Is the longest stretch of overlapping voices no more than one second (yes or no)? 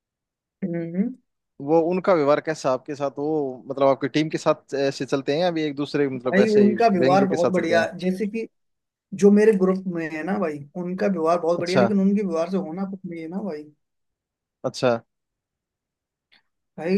no